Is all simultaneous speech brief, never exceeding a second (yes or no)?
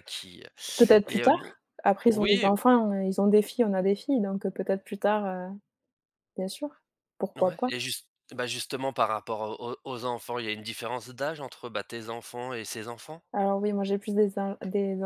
yes